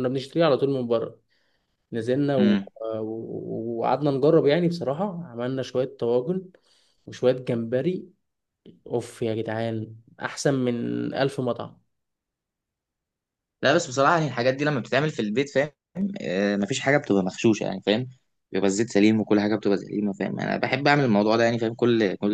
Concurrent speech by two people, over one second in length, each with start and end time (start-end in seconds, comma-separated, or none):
none